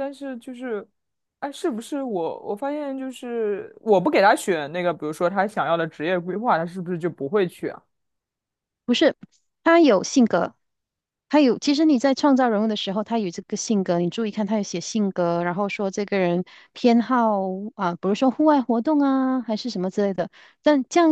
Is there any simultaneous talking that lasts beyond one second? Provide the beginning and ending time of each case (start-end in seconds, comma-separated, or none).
none